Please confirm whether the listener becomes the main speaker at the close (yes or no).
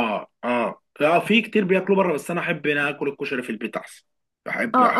yes